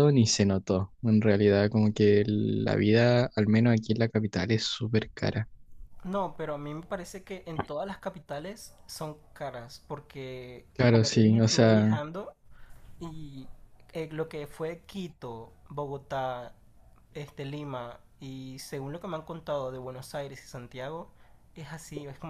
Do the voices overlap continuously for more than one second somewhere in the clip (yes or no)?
yes